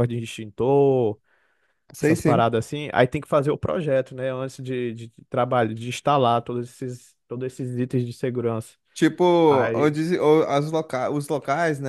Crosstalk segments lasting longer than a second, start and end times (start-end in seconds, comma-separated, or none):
none